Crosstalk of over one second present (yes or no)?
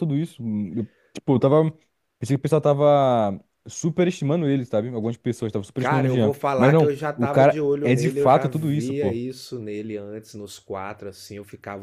yes